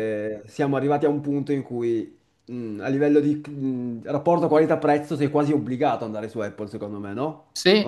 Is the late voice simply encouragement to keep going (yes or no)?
no